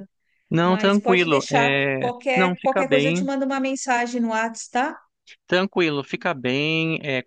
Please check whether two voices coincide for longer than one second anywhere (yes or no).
yes